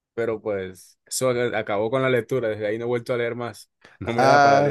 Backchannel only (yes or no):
no